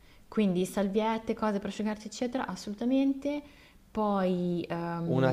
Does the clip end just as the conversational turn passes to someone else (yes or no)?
yes